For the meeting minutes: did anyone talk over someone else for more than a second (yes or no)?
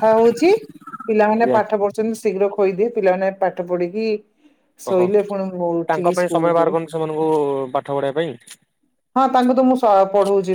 yes